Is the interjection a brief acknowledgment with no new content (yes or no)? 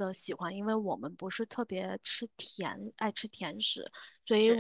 yes